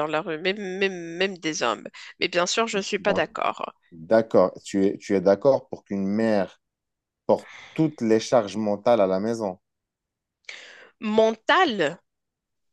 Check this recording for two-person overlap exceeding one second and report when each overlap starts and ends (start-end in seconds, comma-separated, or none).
none